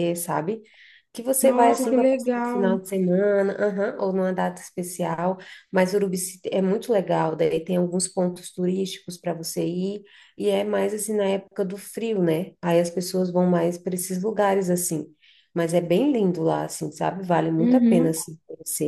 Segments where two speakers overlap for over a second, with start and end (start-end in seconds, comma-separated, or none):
1.4-2.7